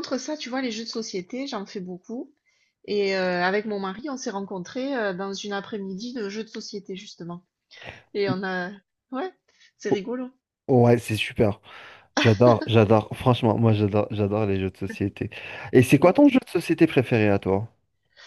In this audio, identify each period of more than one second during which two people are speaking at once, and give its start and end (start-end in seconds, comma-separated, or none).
none